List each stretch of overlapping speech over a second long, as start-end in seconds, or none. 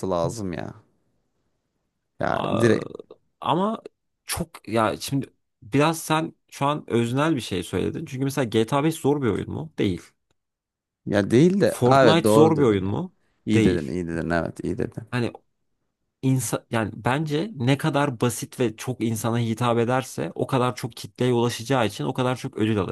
11.7-12.9